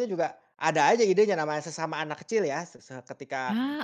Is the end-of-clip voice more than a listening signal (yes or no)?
no